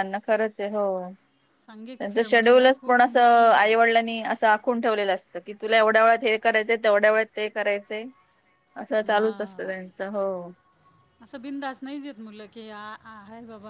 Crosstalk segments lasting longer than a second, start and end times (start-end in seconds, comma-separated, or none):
2.0-3.7